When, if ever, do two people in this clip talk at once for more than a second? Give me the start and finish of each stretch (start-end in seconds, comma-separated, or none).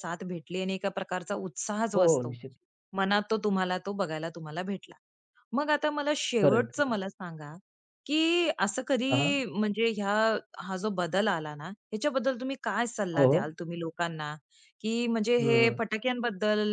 none